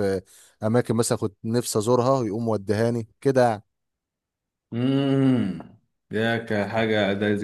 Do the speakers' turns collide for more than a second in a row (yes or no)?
no